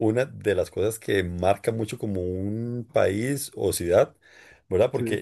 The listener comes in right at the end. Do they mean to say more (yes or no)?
no